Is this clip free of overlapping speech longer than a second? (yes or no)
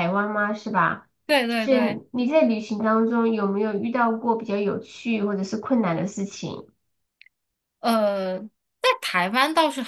yes